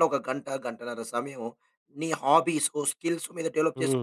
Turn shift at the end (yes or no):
yes